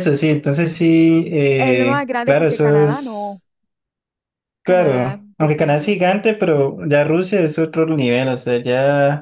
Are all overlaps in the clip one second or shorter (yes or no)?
no